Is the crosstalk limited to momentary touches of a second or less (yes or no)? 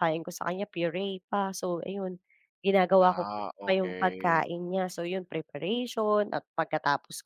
no